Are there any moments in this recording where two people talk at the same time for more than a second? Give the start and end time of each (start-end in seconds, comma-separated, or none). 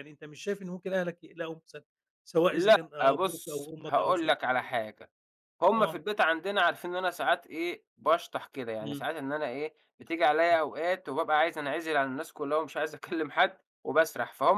2.5-4.7